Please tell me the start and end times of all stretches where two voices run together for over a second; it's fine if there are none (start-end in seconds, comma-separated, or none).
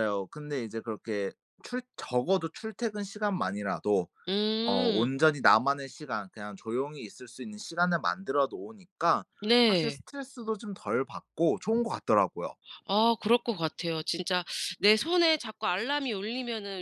none